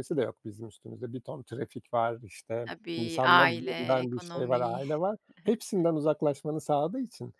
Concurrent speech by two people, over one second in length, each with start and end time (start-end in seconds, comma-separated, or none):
2.7-4.6